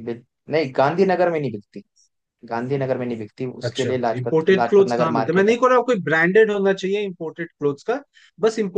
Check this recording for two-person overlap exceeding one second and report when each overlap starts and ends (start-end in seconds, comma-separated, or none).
3.7-5.6